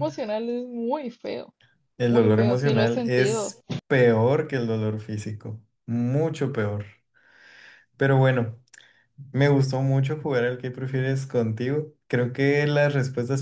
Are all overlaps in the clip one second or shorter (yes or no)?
no